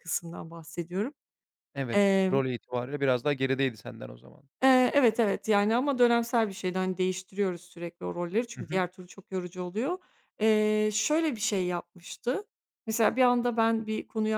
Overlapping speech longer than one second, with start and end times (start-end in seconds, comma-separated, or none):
none